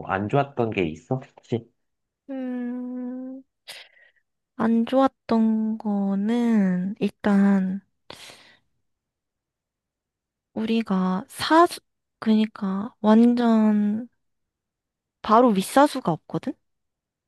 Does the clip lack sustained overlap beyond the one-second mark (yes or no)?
yes